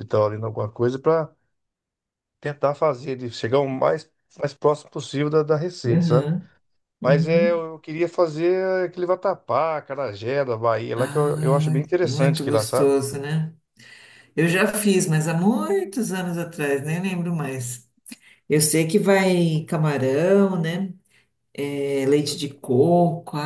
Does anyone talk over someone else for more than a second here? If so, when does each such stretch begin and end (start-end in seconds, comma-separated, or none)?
10.9-12.9